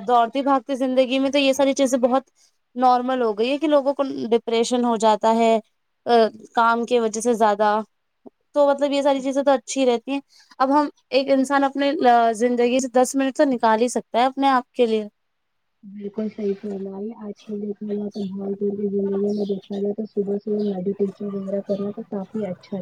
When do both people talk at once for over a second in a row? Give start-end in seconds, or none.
none